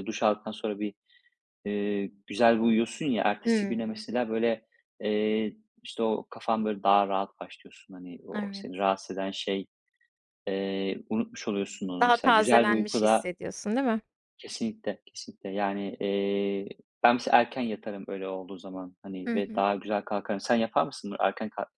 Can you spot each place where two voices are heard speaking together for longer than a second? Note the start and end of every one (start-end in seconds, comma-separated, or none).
12.0-13.3